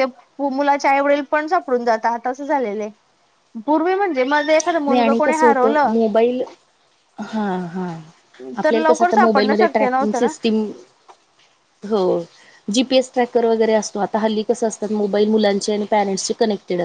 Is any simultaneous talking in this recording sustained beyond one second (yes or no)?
yes